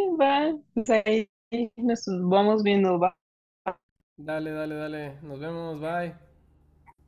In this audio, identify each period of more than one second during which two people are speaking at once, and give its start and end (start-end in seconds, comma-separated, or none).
none